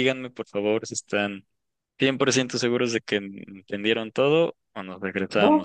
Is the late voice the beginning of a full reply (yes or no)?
yes